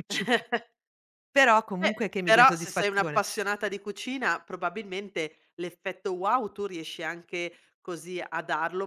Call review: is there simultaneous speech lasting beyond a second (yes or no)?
yes